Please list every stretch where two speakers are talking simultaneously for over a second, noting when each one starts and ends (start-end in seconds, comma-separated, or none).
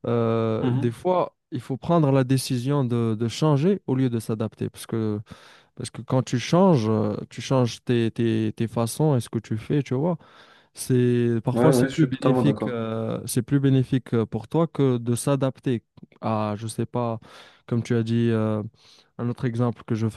11.5-12.8